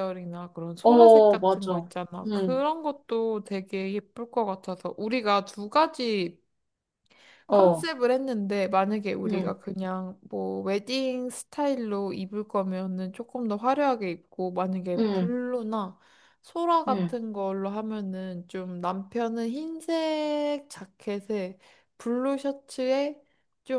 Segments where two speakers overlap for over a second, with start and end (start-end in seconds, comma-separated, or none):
0.8-2.6